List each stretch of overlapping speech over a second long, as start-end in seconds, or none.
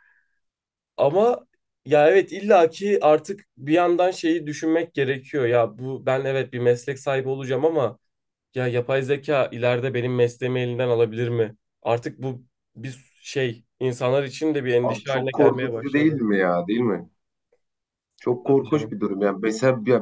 14.8-16.2